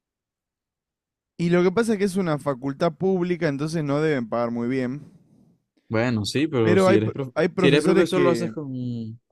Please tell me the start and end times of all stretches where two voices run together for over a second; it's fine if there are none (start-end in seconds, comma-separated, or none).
6.6-8.6